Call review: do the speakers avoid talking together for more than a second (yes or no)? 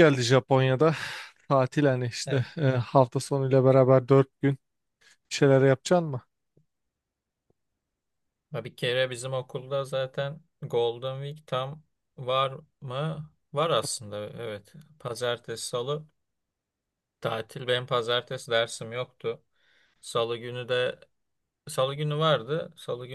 yes